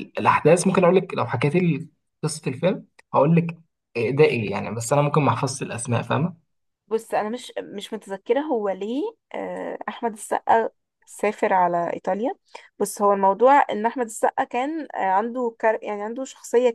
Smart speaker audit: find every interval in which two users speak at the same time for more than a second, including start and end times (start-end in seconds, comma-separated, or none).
none